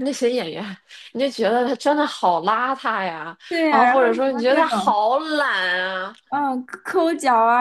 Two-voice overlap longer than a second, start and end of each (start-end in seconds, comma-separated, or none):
3.5-5.0